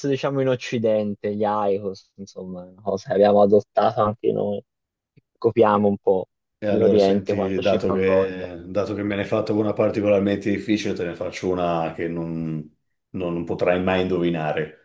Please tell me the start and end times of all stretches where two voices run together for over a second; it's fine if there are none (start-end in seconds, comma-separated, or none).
6.7-8.5